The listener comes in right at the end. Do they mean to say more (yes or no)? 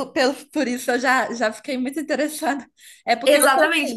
yes